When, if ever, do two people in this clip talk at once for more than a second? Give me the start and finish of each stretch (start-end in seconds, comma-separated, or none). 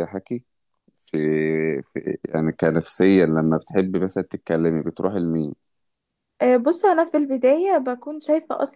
none